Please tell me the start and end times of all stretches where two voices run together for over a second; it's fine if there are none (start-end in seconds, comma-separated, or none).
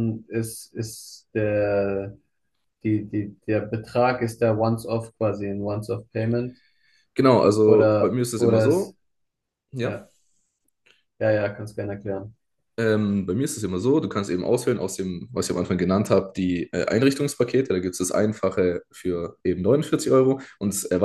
7.7-8.9